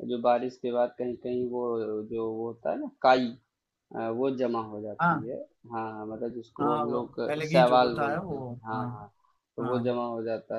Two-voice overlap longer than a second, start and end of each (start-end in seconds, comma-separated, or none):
6.6-8.9